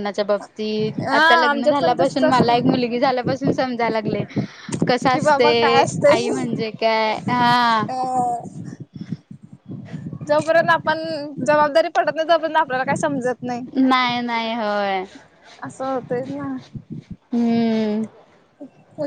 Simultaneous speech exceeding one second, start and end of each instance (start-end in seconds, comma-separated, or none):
1.0-2.8, 5.1-6.6